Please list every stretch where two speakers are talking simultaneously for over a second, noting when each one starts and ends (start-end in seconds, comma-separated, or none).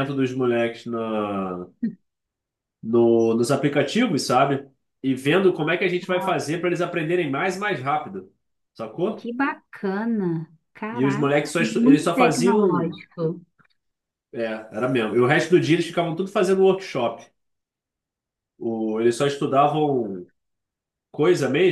10.9-13.0